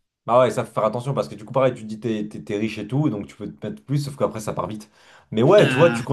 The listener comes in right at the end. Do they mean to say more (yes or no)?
no